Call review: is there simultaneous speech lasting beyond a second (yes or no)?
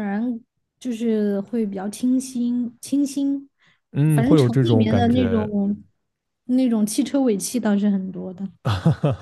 yes